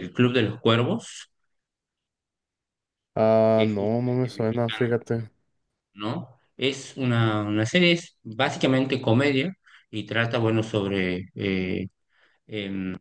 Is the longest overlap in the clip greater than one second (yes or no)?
yes